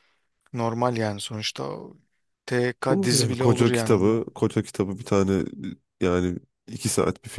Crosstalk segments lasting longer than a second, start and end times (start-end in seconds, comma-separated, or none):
2.9-4.3